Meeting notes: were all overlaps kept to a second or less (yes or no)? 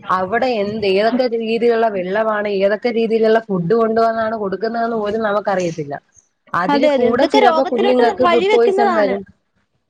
no